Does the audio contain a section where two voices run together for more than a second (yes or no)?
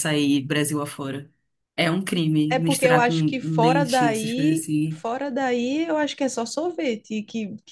yes